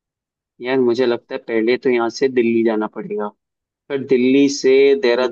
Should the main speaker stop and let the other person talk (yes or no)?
no